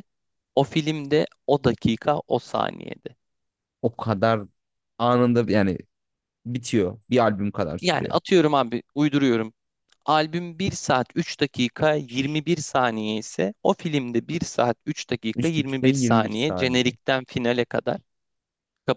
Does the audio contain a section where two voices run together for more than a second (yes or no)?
yes